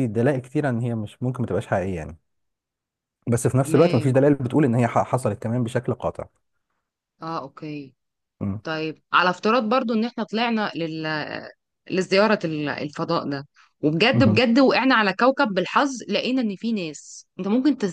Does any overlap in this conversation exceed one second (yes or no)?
no